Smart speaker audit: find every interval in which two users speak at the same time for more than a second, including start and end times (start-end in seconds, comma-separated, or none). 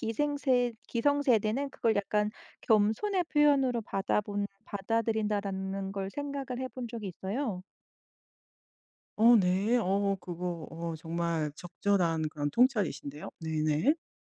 none